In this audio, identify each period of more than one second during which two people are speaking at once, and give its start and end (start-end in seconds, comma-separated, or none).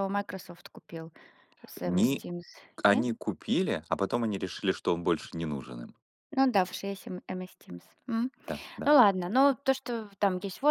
none